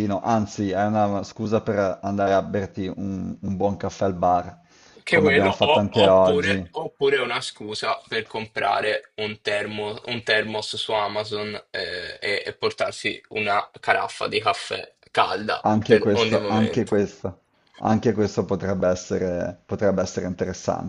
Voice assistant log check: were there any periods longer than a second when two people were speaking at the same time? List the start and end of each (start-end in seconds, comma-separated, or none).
5.1-6.8, 15.6-17.0